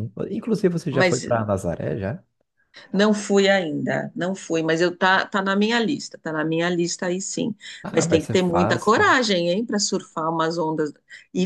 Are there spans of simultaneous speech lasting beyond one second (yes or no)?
yes